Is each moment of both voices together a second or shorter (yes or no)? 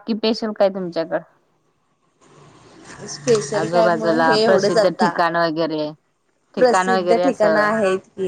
no